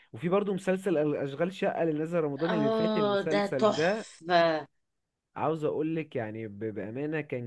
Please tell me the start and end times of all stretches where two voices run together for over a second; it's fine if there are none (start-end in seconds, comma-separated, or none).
2.5-4.1